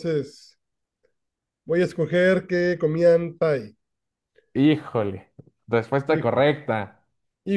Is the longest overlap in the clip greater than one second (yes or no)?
no